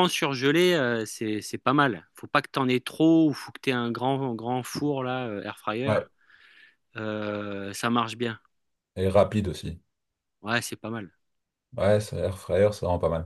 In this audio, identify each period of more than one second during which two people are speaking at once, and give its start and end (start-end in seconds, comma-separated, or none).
none